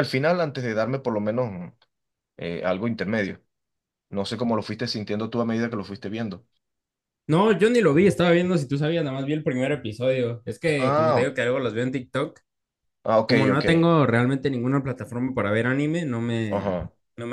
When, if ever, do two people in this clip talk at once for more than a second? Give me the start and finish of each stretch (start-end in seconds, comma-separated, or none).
none